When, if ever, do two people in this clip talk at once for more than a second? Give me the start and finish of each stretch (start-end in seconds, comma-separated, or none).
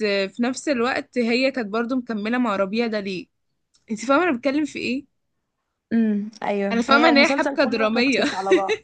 6.7-8.2